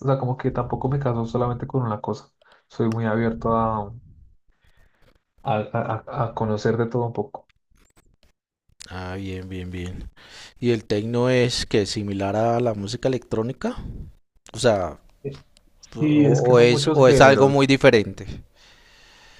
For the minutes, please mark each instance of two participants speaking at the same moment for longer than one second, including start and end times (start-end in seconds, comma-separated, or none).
16.0-17.6